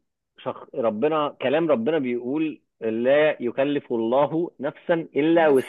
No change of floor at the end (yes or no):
no